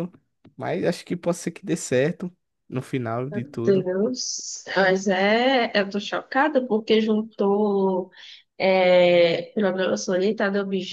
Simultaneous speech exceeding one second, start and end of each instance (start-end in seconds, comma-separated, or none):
none